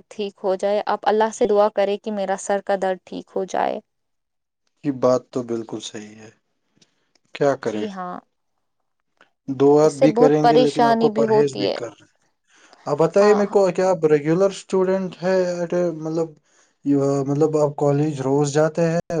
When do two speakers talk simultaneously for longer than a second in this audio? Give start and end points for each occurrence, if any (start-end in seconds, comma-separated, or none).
9.8-11.8